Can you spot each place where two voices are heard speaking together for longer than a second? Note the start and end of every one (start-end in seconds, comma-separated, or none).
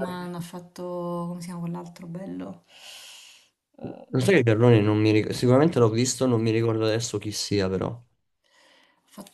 none